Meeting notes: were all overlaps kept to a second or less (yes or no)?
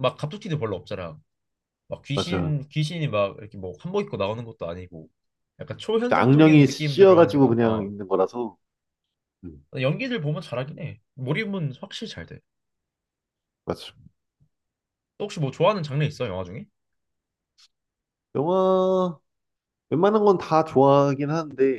no